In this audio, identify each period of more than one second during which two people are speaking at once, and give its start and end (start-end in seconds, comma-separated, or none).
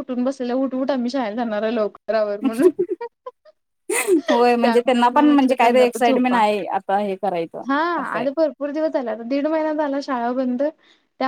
4.6-6.4